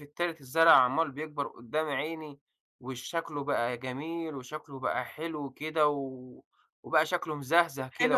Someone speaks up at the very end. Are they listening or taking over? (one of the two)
taking over